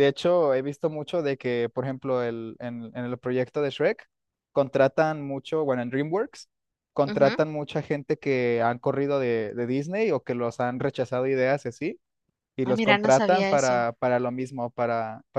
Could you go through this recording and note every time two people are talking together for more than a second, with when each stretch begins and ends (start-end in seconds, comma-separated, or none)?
12.6-13.9